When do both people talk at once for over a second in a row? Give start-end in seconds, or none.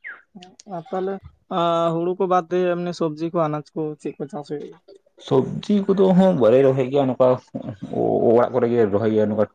none